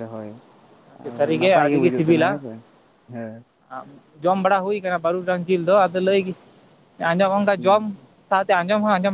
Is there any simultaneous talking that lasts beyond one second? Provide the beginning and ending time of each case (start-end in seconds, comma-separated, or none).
1.1-2.4